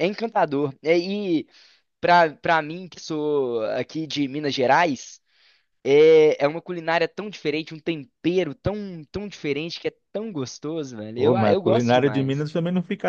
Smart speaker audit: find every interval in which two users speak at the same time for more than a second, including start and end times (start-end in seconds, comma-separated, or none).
11.2-12.5